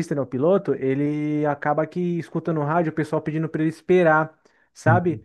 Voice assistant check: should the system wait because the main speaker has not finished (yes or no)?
yes